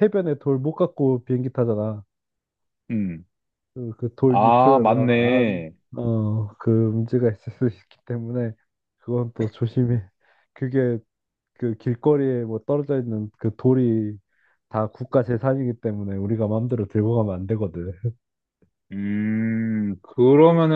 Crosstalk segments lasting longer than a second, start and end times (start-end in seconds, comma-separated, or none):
4.3-5.7